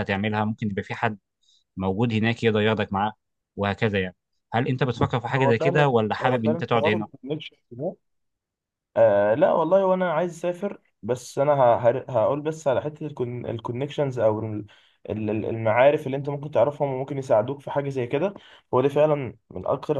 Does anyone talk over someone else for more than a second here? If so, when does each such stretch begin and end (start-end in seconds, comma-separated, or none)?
5.3-7.0